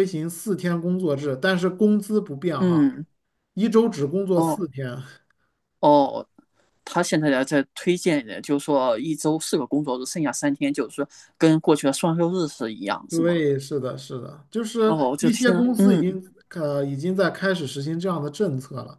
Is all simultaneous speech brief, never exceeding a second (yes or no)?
no